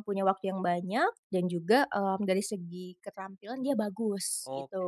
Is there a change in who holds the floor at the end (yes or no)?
yes